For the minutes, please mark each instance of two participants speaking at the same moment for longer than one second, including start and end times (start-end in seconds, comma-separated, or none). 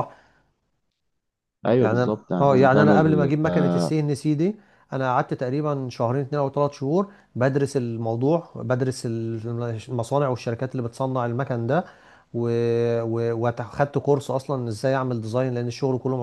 1.8-3.4